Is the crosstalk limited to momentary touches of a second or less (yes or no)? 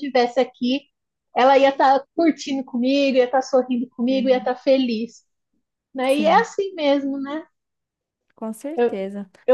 yes